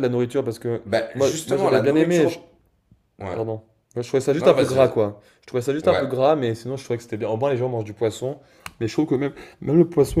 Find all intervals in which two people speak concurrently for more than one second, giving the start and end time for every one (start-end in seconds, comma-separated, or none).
0.8-2.4